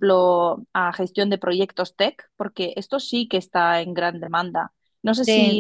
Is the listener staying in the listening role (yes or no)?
no